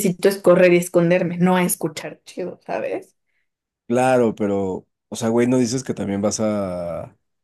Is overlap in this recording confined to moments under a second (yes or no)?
yes